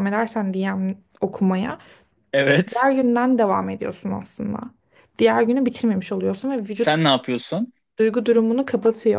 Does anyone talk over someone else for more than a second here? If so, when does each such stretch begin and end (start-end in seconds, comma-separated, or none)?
none